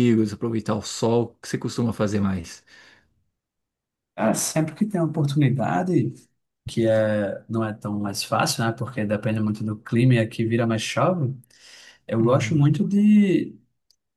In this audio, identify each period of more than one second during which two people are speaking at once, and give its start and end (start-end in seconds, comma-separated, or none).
none